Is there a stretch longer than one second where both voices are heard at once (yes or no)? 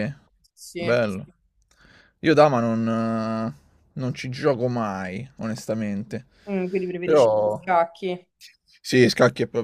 no